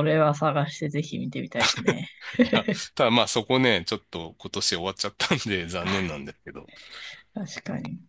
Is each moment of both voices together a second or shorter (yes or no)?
yes